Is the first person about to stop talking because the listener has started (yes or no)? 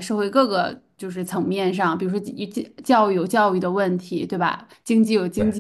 no